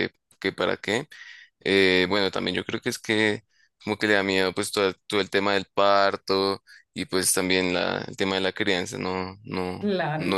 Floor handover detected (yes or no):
no